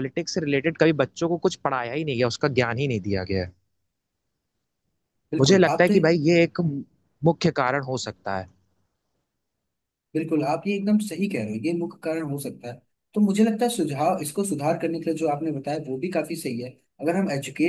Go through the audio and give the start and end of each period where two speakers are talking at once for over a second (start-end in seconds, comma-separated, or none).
none